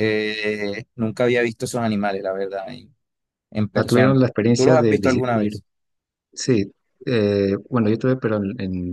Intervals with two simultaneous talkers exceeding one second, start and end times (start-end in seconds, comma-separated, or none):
3.7-5.4